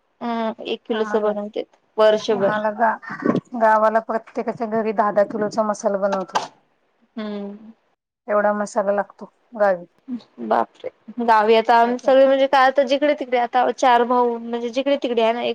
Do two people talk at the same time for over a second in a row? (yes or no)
yes